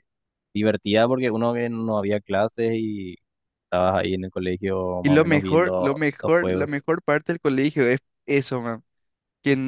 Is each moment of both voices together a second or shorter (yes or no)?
no